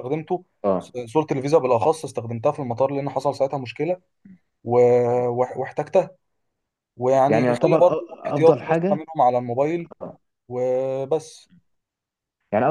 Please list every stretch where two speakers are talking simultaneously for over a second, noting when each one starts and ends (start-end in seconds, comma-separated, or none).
7.3-9.0